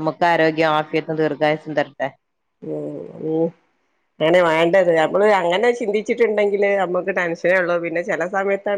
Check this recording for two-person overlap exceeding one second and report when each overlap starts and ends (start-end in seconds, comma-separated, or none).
none